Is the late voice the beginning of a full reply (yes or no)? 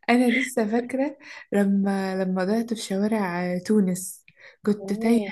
no